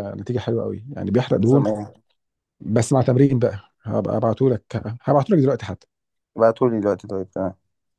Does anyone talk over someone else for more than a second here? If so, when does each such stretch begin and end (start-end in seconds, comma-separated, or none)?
none